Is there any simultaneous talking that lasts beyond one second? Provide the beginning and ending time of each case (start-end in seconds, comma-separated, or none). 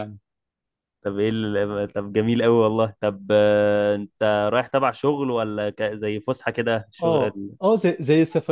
none